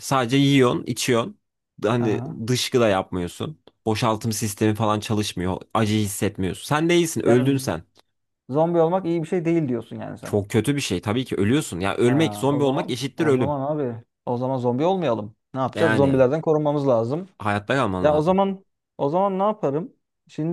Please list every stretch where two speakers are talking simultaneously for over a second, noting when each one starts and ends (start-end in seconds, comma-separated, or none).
12.0-13.6